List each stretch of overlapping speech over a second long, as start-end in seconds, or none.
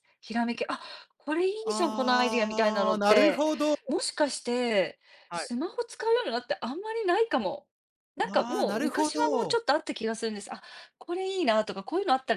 1.6-3.5, 8.2-9.6